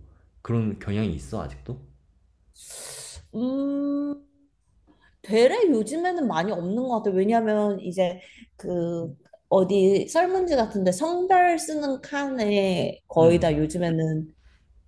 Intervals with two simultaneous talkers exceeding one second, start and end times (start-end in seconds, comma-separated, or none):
none